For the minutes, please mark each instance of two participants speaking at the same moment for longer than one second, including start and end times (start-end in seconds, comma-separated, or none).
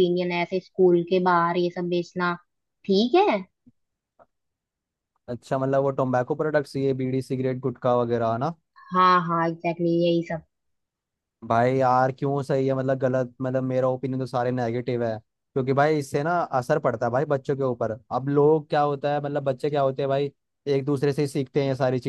none